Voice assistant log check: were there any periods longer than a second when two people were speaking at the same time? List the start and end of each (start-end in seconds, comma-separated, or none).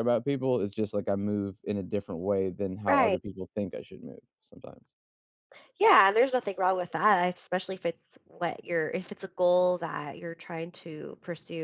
none